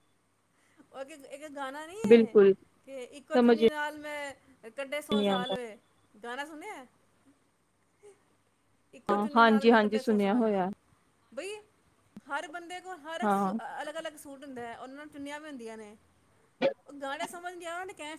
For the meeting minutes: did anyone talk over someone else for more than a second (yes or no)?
yes